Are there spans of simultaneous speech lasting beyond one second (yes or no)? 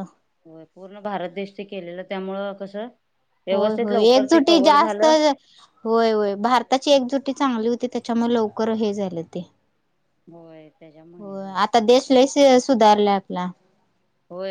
yes